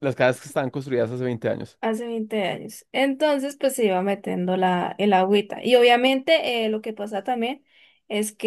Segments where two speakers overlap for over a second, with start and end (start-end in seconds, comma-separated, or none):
none